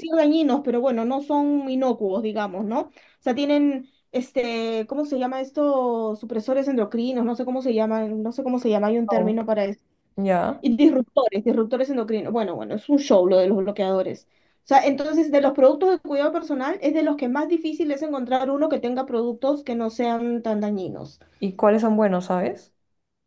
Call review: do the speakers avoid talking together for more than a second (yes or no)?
yes